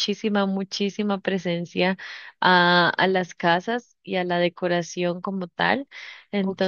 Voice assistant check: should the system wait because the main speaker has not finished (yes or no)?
yes